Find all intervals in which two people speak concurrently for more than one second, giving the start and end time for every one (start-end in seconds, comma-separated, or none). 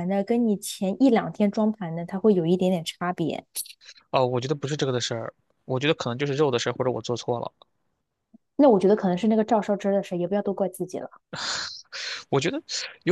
none